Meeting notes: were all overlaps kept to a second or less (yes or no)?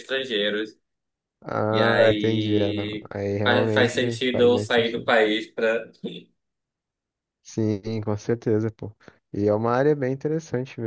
no